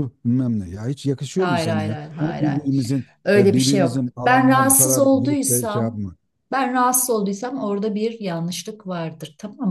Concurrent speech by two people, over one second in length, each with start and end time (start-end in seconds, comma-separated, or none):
1.4-2.6, 3.2-6.0